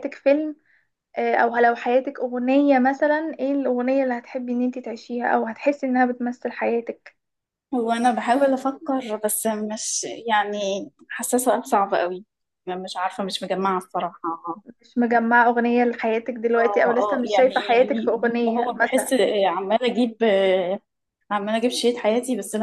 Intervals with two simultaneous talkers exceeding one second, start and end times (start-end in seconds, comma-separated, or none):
16.6-19.1